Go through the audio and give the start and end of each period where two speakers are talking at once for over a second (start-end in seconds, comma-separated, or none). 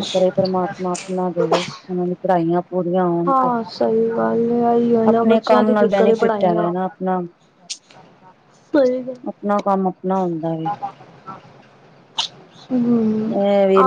5.1-6.7